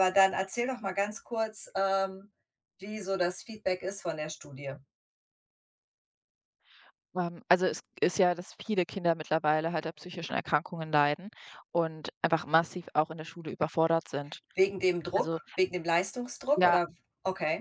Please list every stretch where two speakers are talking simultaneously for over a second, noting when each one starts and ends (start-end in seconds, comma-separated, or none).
none